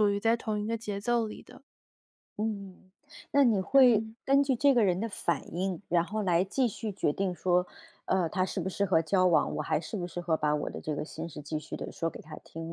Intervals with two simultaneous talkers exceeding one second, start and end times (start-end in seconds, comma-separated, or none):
none